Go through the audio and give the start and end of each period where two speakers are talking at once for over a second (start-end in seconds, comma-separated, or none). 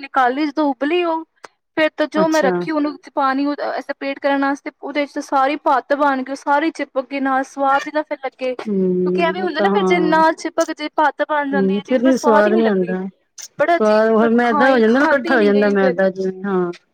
8.7-10.1, 13.8-15.9